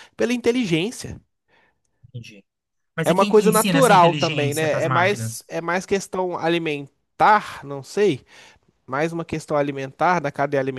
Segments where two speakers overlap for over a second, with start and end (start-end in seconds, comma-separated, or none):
3.0-5.4